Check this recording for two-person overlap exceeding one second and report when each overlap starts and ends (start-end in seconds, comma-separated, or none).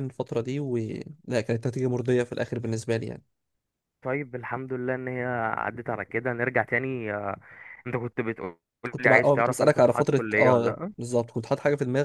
9.0-10.9